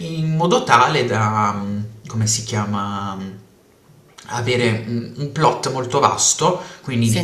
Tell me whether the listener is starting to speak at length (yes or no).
no